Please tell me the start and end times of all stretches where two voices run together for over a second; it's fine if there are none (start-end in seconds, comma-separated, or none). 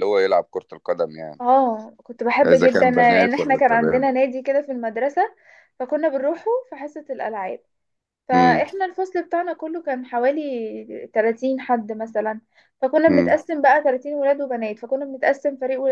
2.4-4.1